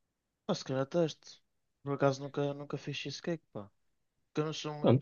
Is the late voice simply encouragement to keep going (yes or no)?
yes